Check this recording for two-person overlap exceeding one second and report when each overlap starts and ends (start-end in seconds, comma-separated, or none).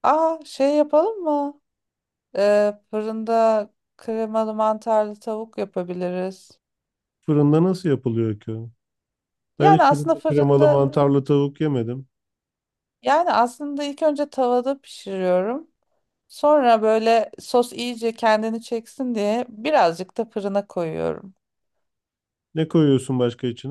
9.6-10.8